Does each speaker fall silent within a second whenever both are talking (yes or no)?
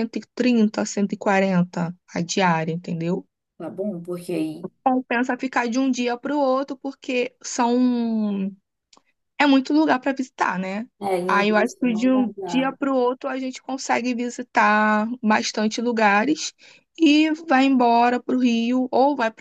no